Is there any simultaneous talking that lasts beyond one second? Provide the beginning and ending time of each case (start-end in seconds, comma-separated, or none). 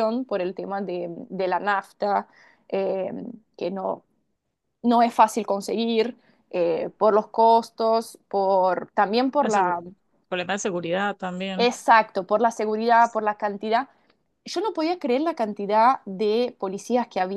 none